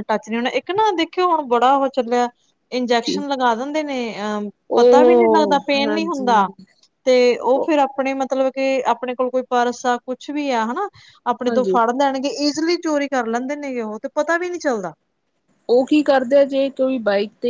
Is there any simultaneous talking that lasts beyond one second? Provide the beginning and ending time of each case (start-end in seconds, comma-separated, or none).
4.8-6.5